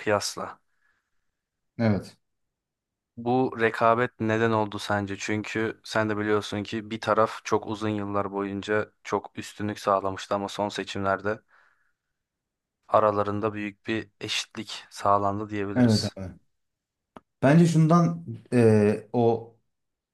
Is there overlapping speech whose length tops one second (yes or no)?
no